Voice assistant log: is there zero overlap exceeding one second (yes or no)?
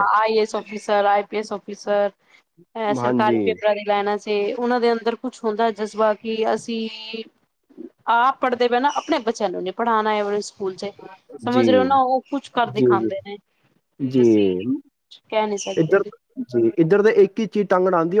yes